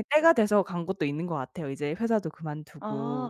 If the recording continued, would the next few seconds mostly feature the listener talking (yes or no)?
yes